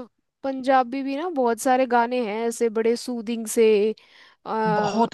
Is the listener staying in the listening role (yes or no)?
no